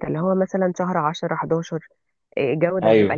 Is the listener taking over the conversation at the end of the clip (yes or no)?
no